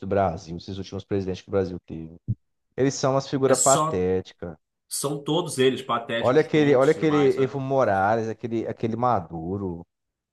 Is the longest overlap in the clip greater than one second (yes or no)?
yes